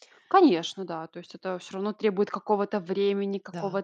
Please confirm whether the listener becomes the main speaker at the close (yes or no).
no